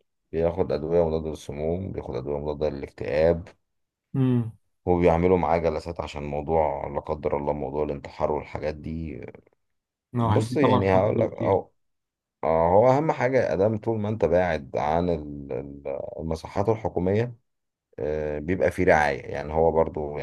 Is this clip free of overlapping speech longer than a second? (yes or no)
no